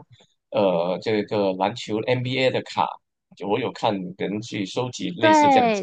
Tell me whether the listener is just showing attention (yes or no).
no